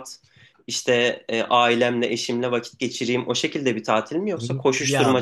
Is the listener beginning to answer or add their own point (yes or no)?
yes